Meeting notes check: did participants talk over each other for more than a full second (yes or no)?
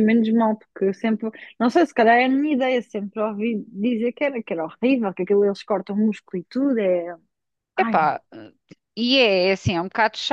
no